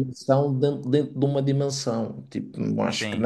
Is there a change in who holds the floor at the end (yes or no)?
no